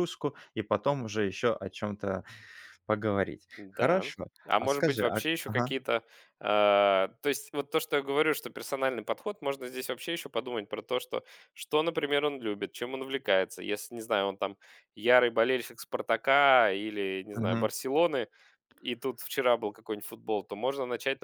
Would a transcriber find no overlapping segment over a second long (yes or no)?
no